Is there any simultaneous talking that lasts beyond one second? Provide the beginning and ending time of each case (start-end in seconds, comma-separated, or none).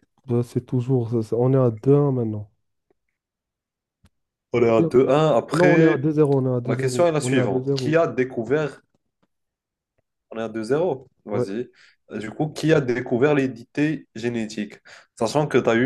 6.6-8.0